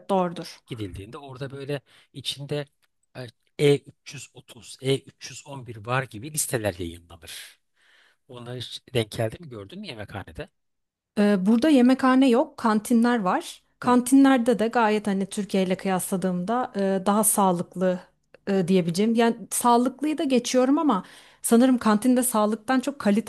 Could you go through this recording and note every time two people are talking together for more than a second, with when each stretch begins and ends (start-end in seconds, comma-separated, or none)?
none